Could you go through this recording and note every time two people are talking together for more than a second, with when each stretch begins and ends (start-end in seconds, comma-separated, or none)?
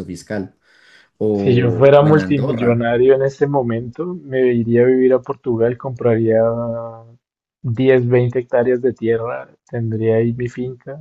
1.3-2.9